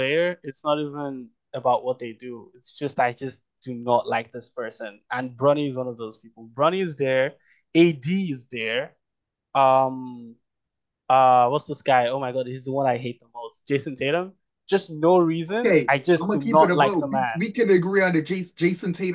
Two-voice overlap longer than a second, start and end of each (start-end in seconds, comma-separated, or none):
15.6-17.4